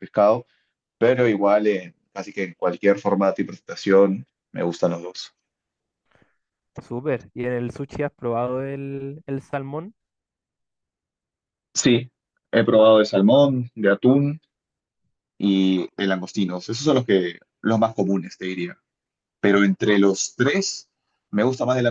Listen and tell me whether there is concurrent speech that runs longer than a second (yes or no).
no